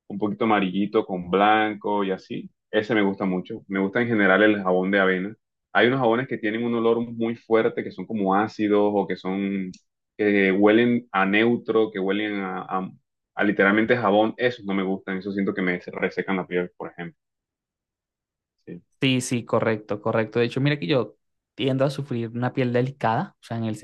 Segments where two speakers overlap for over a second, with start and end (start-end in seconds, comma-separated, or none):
none